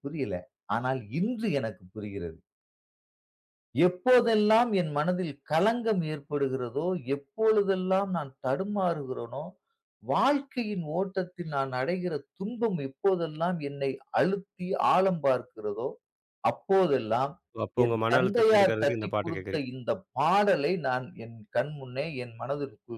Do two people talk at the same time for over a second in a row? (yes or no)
yes